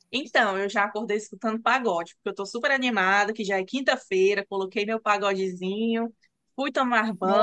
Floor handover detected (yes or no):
no